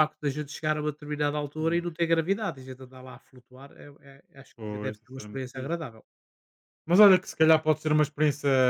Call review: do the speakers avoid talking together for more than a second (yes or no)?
no